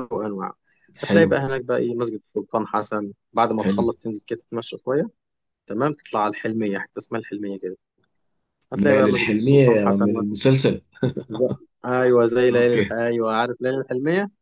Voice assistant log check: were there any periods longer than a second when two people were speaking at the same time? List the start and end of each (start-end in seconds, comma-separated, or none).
8.8-10.1